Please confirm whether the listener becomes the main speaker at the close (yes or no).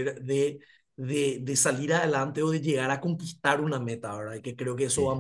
no